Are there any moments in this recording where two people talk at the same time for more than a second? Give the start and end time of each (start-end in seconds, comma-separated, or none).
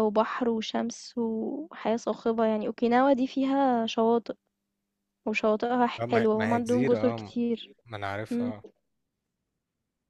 6.0-7.3